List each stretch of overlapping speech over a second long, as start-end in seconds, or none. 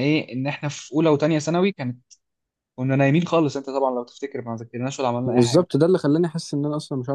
none